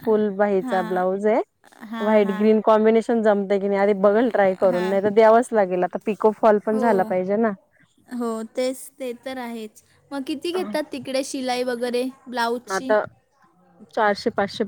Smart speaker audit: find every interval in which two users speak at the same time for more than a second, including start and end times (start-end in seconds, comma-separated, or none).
none